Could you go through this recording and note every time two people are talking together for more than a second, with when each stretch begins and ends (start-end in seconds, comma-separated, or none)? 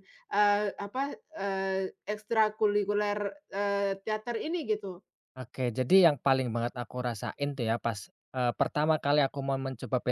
none